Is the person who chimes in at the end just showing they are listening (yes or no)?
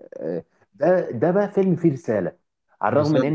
yes